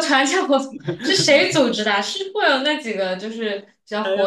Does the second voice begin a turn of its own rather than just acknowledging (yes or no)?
yes